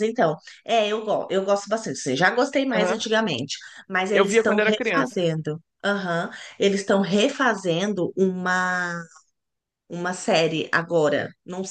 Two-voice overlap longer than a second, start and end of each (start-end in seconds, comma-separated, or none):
4.1-5.3